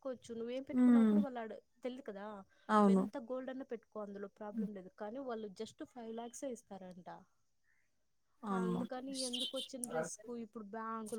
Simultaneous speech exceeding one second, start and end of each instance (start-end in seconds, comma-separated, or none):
8.6-10.0